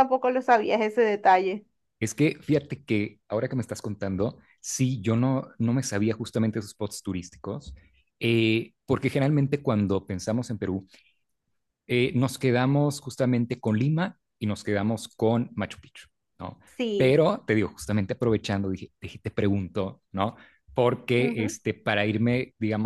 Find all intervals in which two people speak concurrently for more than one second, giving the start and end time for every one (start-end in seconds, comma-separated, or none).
none